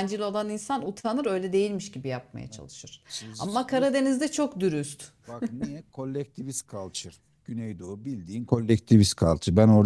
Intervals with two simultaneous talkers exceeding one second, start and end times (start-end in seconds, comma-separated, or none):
none